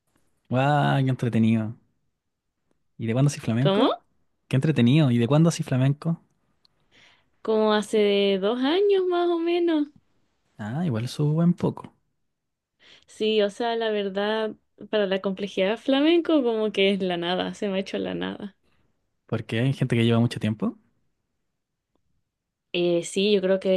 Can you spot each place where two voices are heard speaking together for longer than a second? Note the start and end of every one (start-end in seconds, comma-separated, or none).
none